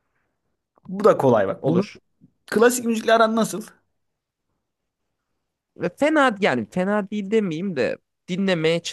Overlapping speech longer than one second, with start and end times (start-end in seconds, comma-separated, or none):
none